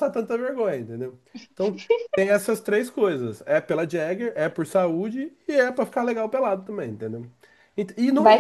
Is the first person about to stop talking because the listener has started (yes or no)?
yes